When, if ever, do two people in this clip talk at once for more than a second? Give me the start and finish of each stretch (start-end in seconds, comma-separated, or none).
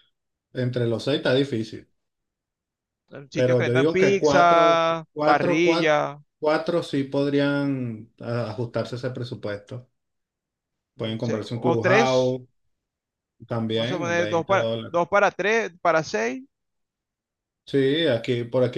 3.3-6.0, 11.0-12.4, 13.7-15.0